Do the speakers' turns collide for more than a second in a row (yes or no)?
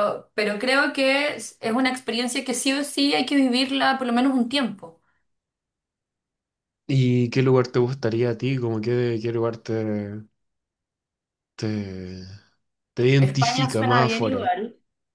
yes